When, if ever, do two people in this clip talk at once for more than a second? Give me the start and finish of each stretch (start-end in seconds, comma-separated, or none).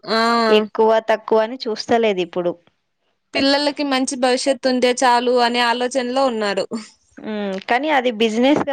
none